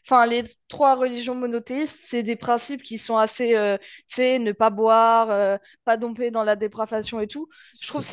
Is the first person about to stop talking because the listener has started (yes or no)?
no